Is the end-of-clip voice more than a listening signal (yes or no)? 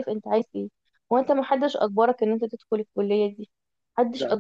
no